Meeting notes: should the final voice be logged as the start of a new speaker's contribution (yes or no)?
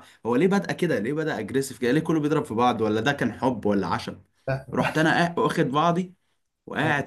no